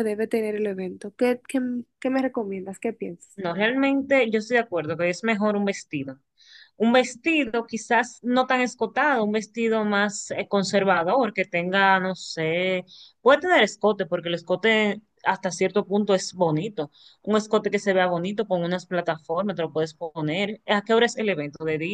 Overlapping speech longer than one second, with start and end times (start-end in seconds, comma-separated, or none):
none